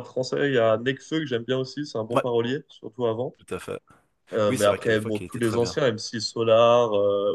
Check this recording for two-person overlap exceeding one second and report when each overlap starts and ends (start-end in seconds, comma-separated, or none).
4.5-5.8